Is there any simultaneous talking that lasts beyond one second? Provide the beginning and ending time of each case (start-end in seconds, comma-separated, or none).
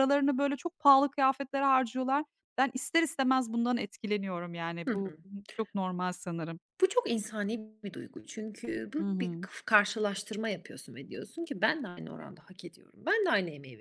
none